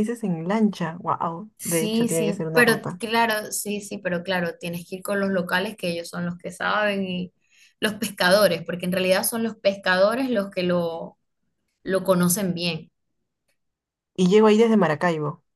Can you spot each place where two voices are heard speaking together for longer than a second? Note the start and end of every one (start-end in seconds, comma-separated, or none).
1.6-3.0